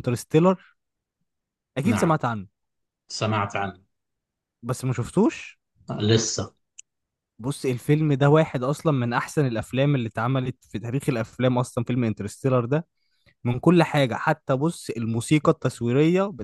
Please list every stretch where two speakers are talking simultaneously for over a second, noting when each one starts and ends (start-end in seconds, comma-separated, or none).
none